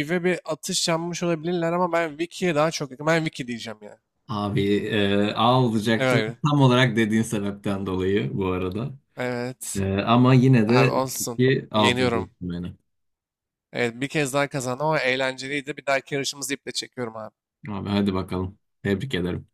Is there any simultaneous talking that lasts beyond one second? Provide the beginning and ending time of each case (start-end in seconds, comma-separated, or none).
10.7-12.3